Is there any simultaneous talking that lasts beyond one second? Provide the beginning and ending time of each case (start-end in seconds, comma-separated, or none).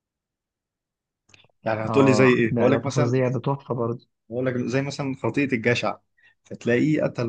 1.9-3.2